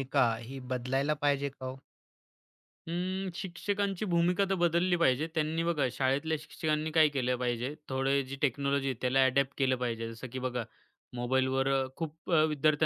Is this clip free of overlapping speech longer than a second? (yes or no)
yes